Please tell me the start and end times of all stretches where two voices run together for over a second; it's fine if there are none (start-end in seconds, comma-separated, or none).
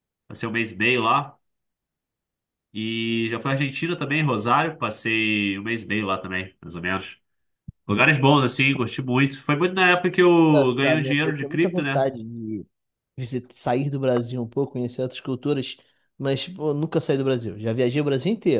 10.5-12.1